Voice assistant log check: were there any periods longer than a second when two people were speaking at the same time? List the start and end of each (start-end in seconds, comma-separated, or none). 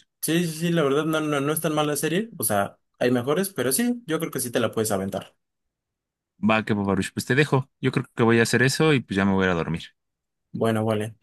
none